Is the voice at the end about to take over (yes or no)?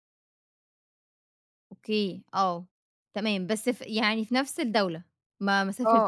yes